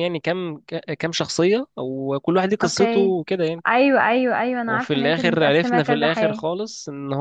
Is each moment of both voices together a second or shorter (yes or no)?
no